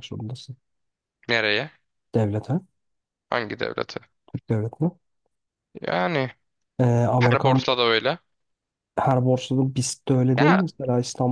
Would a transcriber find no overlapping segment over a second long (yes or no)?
yes